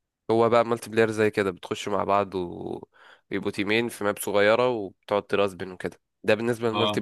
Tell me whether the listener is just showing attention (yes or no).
yes